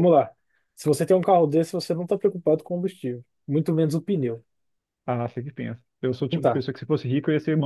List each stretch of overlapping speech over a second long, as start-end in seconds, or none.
none